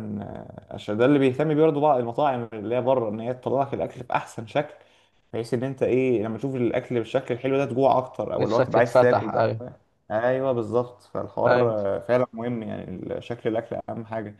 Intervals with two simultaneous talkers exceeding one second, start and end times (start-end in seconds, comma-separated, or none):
8.3-9.6